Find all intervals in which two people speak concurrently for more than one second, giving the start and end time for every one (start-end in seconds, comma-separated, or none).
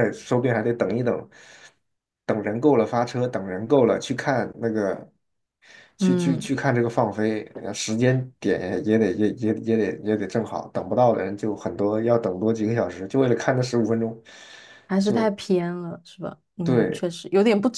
none